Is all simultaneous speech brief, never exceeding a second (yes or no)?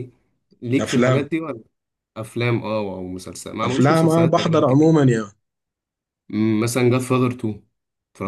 no